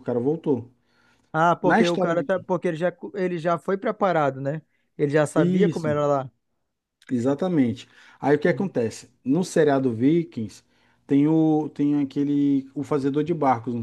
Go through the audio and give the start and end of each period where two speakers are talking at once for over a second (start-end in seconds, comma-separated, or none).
none